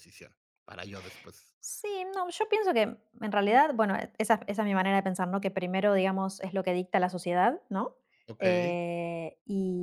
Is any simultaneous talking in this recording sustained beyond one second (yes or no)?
no